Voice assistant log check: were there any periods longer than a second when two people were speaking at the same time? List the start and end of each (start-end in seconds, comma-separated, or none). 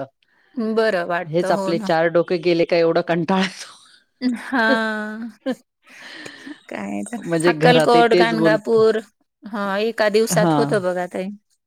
7.5-8.8